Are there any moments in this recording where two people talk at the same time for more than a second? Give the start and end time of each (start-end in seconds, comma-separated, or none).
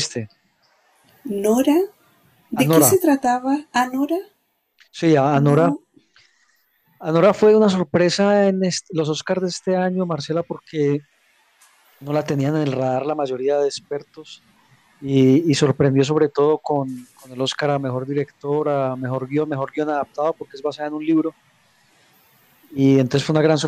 none